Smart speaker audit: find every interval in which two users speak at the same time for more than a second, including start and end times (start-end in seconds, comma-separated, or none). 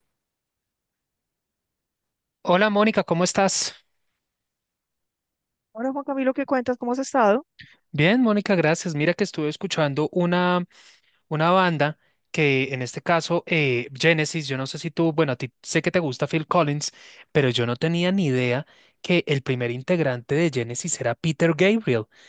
none